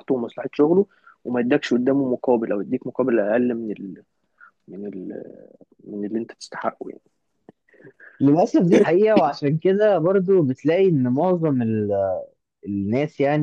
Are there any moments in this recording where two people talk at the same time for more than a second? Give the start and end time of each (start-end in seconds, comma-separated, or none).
none